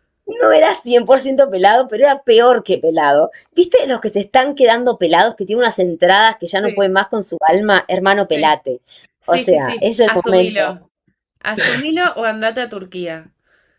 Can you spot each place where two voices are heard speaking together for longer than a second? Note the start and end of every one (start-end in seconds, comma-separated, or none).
9.2-10.8